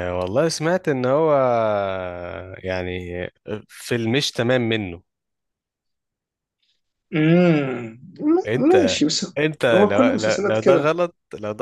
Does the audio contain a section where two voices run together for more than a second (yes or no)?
yes